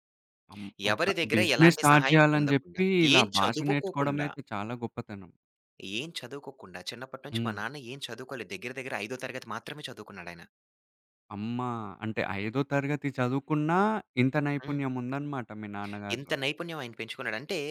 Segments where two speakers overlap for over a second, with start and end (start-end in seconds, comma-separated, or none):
0.9-4.3